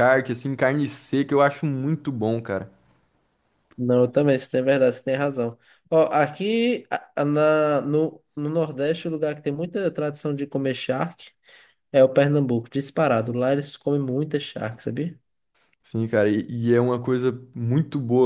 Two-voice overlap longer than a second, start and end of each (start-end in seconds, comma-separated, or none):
none